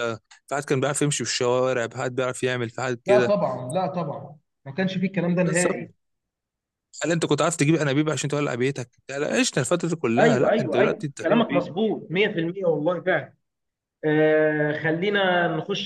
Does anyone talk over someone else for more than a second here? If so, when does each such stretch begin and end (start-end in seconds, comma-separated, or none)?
10.2-11.6